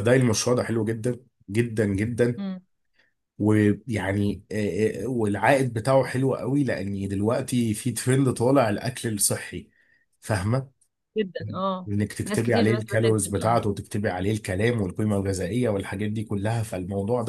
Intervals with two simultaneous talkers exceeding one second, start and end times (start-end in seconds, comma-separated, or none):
11.9-13.6